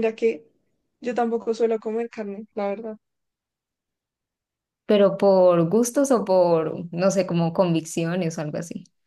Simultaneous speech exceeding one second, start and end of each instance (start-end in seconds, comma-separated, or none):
none